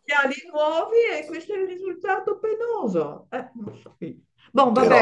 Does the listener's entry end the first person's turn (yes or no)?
no